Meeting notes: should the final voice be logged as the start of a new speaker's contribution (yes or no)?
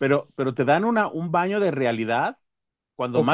no